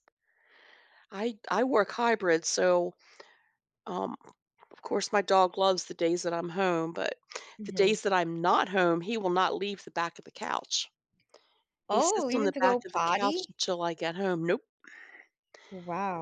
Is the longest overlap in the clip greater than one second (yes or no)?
yes